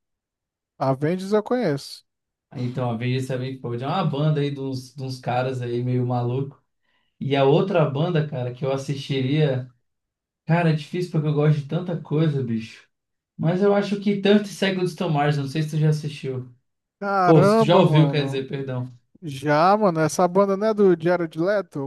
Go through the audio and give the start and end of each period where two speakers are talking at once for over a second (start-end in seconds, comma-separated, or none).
17.2-18.4